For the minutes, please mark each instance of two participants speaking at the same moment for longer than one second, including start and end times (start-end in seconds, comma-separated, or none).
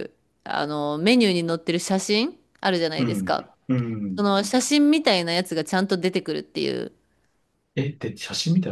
none